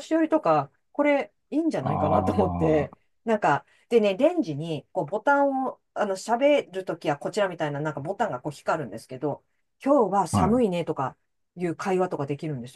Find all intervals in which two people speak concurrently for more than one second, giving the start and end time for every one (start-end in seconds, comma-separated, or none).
1.8-3.0